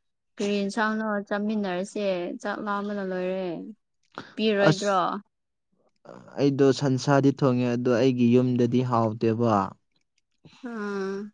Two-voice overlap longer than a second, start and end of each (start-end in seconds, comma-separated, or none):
none